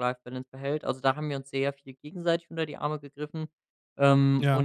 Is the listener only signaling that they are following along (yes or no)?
yes